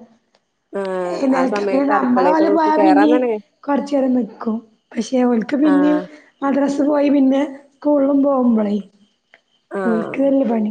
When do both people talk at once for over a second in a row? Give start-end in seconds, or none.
1.4-3.1